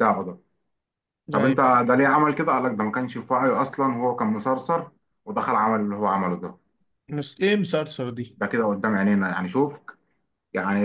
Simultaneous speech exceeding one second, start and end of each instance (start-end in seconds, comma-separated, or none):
none